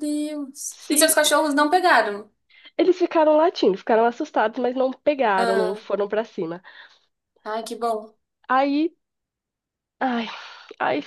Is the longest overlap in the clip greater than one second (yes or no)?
no